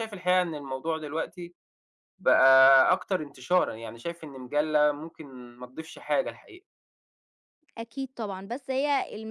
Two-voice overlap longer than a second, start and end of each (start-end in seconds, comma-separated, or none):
none